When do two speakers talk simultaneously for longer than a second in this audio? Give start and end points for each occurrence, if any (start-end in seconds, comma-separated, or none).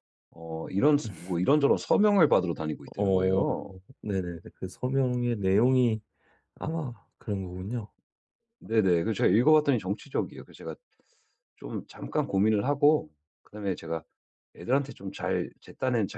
none